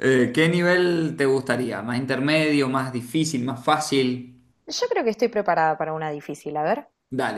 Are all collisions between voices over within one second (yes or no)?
yes